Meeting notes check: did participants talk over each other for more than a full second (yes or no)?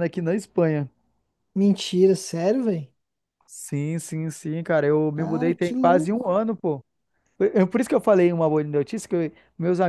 yes